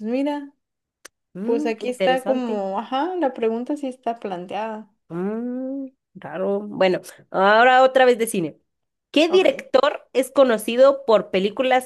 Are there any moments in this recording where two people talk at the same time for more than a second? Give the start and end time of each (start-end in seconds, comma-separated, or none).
1.4-2.6